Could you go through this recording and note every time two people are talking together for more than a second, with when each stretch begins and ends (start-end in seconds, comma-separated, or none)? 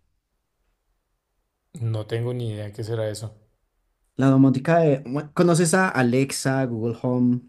none